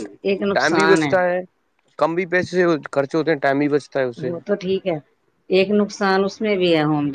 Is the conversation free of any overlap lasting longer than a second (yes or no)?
yes